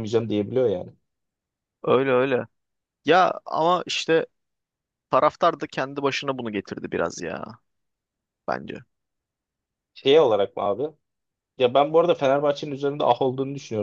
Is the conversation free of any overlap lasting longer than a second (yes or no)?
yes